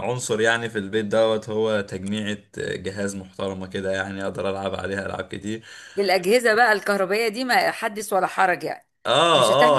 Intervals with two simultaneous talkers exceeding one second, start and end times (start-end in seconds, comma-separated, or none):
none